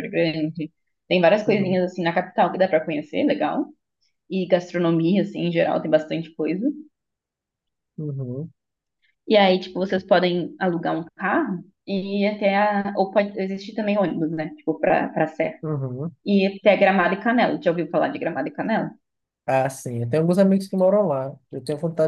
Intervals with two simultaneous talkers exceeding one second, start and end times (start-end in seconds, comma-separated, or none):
none